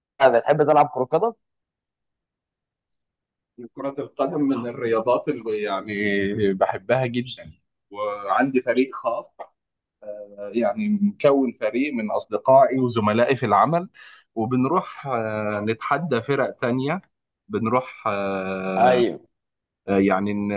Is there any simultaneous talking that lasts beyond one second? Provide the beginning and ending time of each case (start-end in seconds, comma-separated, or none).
none